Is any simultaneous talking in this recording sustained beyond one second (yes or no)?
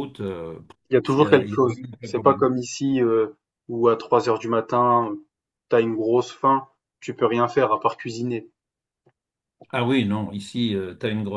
yes